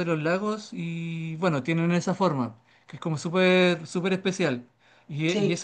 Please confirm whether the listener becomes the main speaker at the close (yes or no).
no